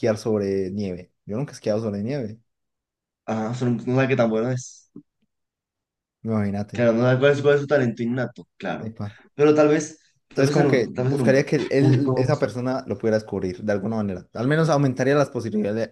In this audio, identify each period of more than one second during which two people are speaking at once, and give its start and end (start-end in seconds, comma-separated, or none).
10.3-12.3